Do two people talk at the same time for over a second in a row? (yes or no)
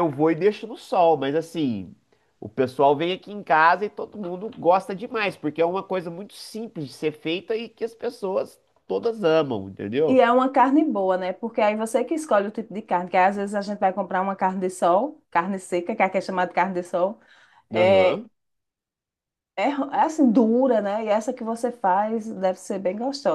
no